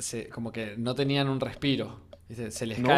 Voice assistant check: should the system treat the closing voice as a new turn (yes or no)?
no